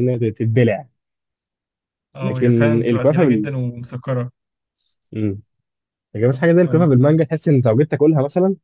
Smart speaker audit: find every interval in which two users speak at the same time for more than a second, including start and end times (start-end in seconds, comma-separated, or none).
2.2-3.5